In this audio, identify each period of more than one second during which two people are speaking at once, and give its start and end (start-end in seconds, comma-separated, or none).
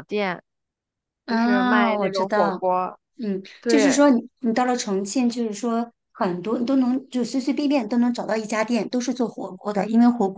1.3-2.6